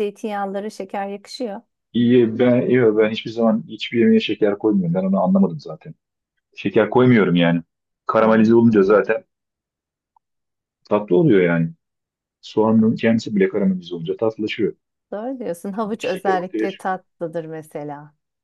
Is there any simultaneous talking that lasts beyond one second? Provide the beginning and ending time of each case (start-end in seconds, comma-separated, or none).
15.7-17.0